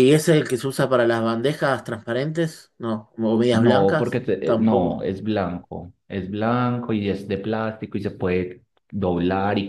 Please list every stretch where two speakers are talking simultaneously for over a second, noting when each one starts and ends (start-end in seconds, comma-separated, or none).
3.5-5.0